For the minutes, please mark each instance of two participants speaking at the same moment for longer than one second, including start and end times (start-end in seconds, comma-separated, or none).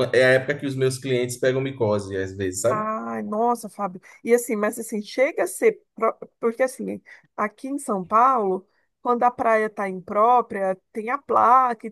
none